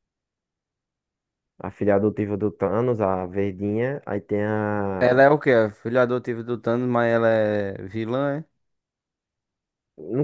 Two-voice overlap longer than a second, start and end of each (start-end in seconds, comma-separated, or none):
none